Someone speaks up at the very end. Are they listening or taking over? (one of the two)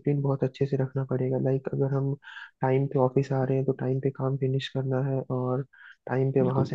taking over